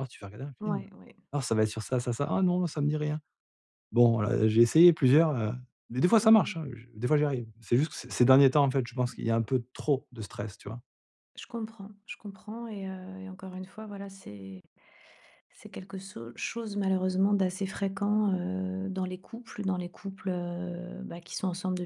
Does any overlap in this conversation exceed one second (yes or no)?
no